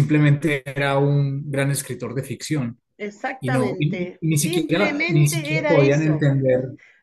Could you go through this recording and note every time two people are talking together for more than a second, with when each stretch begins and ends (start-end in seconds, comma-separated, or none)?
3.4-6.2